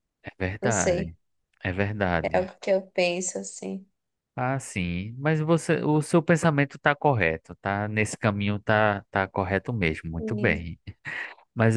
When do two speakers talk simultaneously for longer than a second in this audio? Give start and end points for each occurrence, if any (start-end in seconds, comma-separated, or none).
none